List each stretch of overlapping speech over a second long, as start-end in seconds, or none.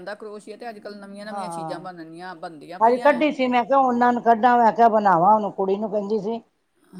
none